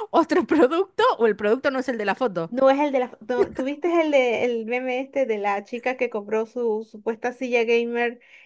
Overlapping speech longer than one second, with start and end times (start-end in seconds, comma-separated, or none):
none